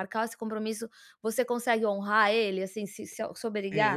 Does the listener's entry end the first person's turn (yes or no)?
yes